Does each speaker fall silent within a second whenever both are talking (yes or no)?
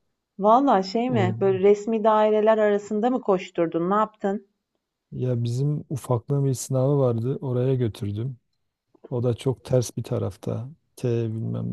yes